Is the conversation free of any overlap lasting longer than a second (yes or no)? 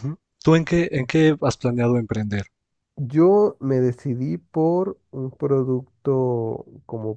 yes